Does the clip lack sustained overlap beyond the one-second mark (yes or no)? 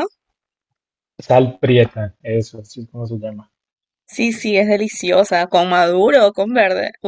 yes